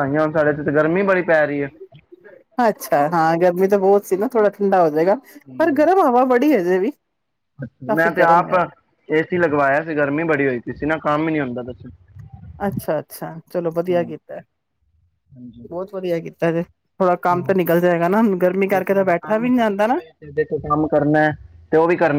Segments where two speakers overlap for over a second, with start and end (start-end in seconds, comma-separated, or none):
18.7-20.0